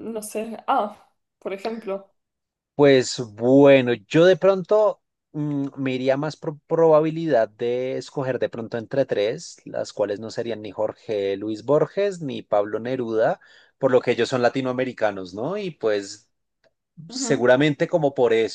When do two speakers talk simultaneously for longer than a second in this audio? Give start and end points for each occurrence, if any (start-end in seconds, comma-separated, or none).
none